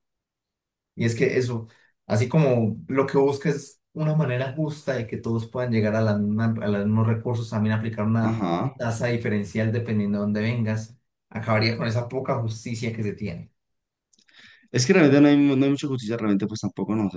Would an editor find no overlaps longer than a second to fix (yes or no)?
yes